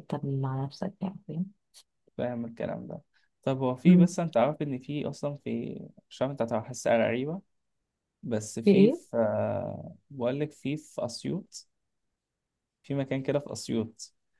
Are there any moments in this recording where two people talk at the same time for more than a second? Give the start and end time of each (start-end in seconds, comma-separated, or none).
none